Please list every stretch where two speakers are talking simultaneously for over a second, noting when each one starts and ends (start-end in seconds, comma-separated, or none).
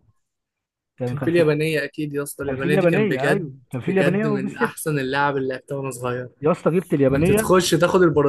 2.5-4.7